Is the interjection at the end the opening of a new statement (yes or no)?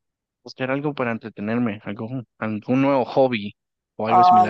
yes